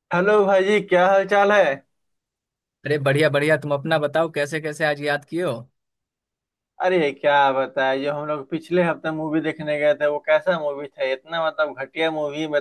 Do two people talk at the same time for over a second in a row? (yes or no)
no